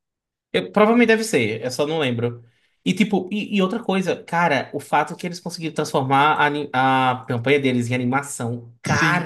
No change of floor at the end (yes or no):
no